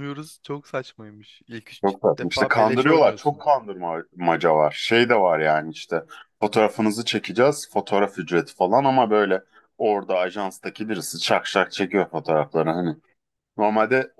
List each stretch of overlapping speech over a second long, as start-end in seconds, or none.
1.8-3.5